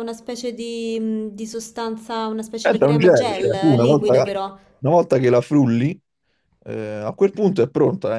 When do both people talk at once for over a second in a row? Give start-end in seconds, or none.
2.6-4.1